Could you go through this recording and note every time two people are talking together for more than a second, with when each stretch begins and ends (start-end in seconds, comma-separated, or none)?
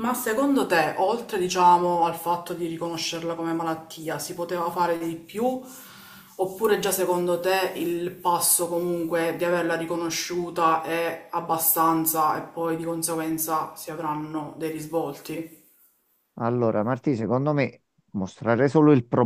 none